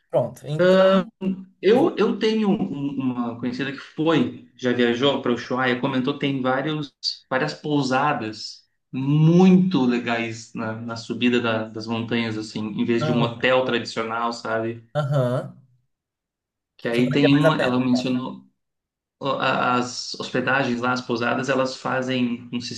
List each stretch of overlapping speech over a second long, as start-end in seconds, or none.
16.9-18.1